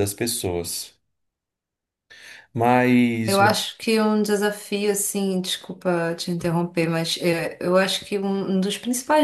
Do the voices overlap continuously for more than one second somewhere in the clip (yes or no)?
no